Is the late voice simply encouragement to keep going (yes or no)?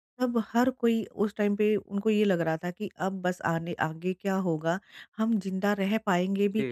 yes